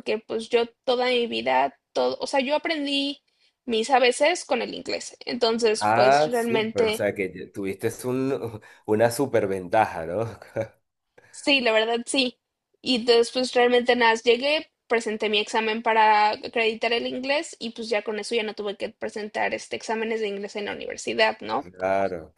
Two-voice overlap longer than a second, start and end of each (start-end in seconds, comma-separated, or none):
5.8-7.1